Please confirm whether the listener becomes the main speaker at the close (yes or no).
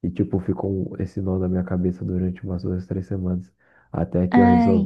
no